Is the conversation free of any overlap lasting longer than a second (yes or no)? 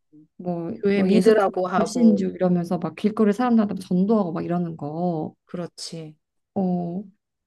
no